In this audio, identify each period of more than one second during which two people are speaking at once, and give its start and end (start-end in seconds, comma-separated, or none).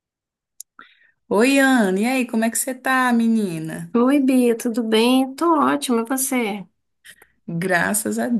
none